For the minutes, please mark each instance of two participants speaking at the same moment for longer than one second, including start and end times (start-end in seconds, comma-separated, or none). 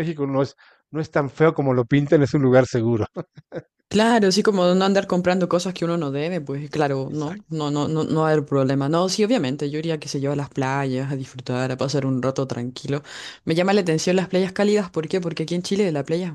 none